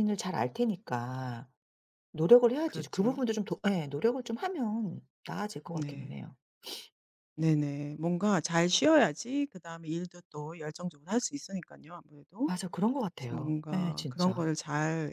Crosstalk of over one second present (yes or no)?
yes